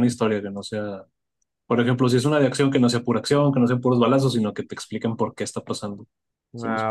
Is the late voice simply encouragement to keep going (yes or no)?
no